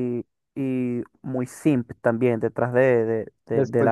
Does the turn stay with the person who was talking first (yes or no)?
no